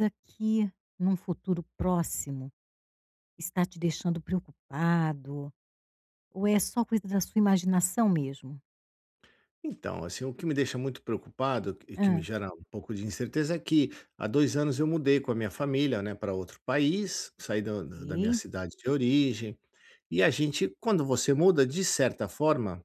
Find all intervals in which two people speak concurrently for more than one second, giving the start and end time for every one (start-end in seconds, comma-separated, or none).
none